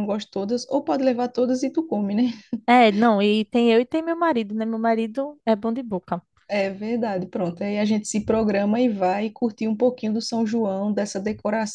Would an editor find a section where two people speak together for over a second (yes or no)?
no